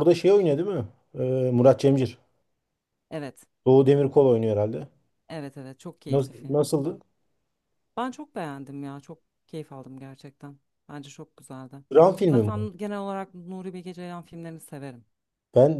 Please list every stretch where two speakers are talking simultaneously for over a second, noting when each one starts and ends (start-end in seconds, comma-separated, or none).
none